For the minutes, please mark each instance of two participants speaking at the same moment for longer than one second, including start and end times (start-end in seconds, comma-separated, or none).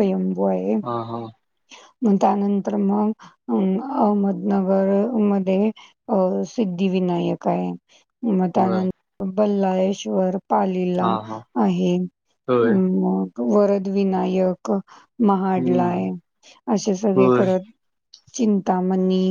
none